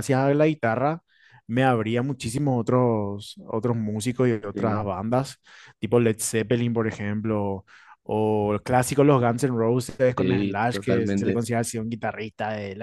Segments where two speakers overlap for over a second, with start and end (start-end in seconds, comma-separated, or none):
10.2-11.4